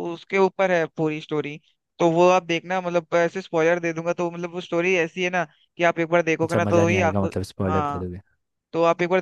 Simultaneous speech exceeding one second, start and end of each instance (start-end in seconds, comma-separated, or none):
6.4-8.1